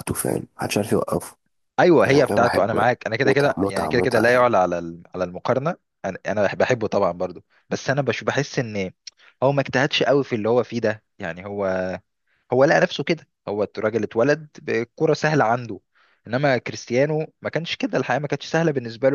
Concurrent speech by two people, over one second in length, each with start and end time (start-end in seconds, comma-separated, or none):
2.0-4.5